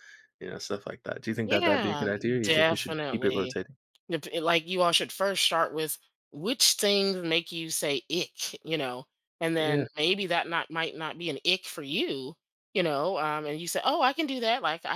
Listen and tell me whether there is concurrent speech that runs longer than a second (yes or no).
yes